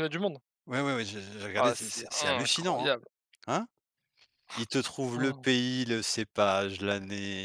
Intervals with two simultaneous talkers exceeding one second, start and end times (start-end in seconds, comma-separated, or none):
1.6-2.9